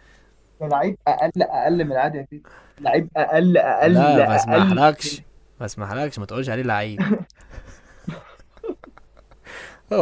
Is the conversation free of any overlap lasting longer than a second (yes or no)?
no